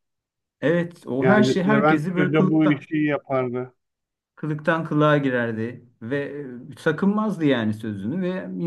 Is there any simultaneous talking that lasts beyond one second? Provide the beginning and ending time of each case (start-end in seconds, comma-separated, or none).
1.2-2.9